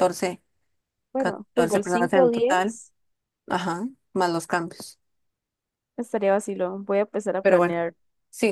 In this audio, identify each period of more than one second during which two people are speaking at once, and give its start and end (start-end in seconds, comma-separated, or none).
1.2-2.8